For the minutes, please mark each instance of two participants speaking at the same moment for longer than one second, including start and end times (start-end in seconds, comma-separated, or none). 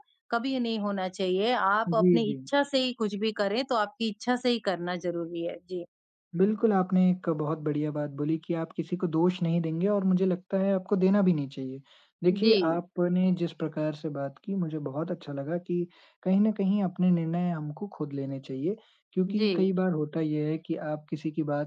none